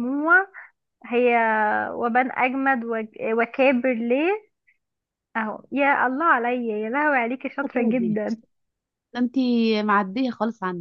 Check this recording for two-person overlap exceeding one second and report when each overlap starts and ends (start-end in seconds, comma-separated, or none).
none